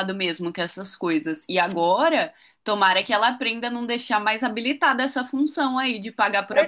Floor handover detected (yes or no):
yes